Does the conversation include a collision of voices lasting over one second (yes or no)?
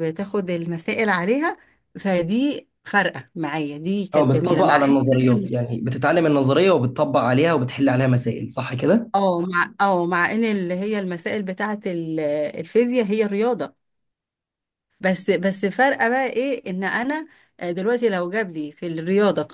yes